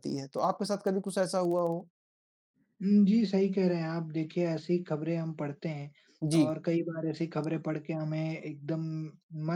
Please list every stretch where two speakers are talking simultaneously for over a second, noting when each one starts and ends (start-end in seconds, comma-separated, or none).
none